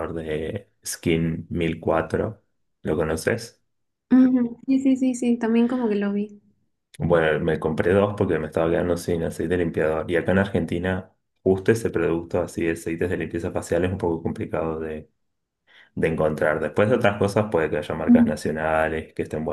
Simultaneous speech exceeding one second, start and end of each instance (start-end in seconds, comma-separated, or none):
none